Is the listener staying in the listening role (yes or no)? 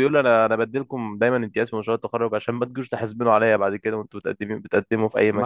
no